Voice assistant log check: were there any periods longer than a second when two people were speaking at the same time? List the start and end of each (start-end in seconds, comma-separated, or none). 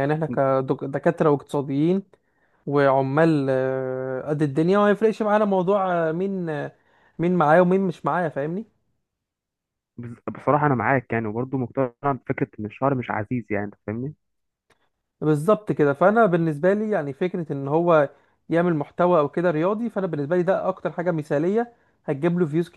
none